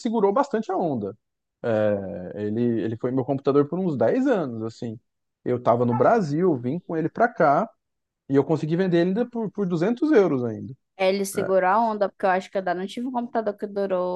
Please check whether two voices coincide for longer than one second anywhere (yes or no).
no